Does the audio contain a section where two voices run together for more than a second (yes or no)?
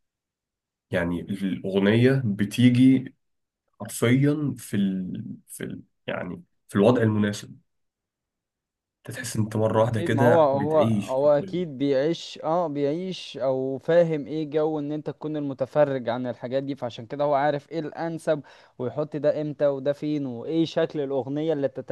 yes